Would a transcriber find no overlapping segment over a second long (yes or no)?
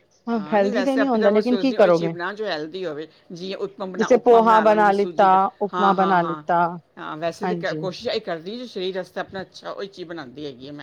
no